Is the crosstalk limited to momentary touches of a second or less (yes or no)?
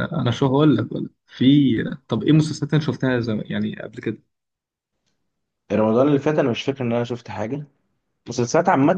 yes